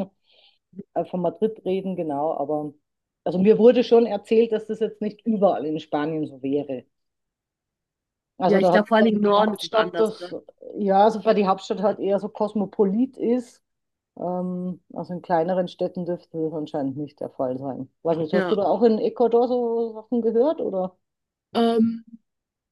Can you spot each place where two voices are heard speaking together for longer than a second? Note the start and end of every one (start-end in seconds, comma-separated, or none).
8.4-10.3